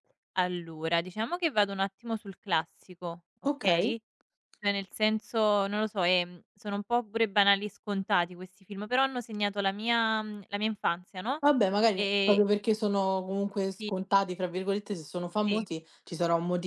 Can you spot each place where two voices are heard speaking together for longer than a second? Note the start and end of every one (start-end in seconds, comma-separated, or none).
none